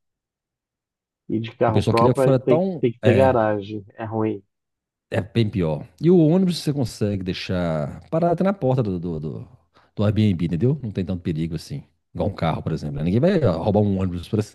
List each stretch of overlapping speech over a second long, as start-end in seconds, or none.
1.6-3.3